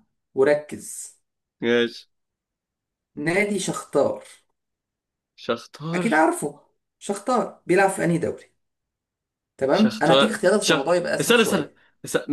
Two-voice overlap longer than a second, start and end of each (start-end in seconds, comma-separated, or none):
9.7-11.7